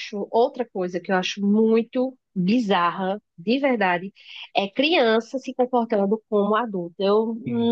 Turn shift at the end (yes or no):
no